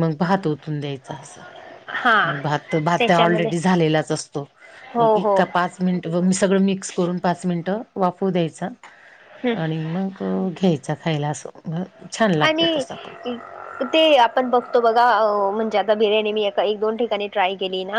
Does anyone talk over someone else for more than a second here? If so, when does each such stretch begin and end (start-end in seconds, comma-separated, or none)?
none